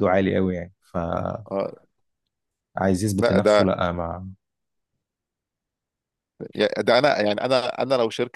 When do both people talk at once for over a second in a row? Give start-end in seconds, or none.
none